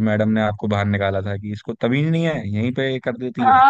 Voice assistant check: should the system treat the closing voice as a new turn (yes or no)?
yes